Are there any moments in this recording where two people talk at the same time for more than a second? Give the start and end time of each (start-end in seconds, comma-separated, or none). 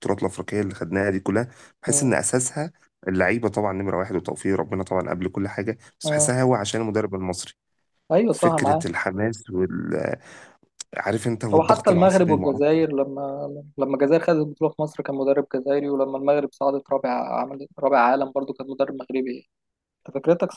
11.5-12.8